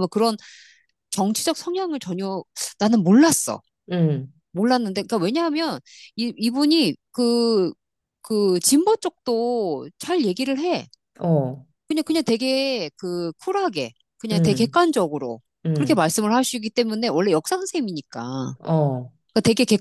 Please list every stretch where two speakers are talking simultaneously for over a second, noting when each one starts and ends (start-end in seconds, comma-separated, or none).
none